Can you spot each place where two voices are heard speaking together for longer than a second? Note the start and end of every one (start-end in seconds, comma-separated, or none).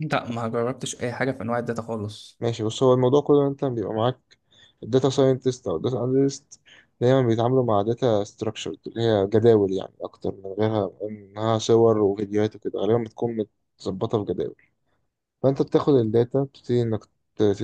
none